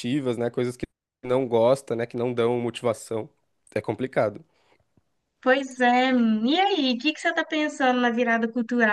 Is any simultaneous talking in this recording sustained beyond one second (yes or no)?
no